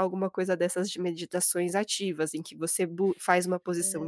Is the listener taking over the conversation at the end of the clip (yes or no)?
no